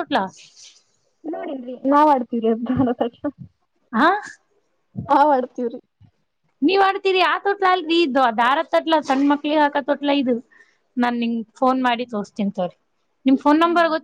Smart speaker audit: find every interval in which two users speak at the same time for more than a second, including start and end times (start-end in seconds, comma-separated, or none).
none